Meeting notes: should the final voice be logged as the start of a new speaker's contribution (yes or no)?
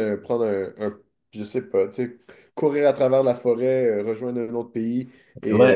yes